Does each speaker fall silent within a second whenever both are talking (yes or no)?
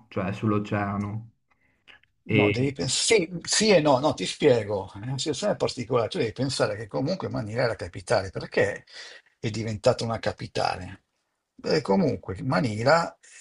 yes